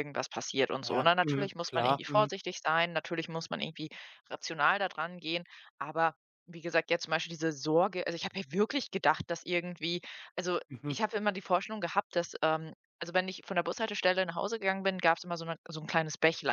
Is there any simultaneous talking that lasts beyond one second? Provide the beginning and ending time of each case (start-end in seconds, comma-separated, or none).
0.8-2.3